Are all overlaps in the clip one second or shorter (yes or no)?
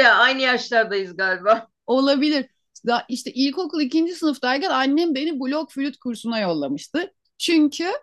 yes